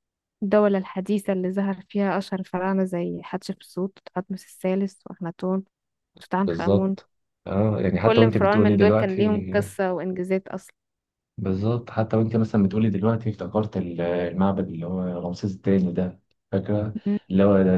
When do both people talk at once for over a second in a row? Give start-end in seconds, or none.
8.0-9.2